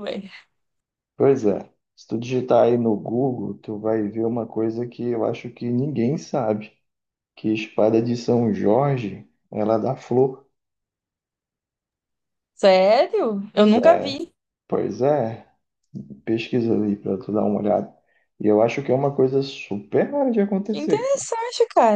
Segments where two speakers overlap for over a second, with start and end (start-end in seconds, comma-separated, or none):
none